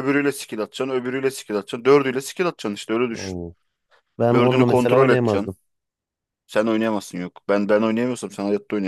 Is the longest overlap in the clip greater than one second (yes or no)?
yes